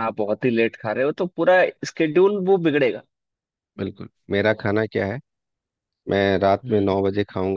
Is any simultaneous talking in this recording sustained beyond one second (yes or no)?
no